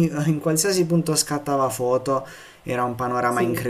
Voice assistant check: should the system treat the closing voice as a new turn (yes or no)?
no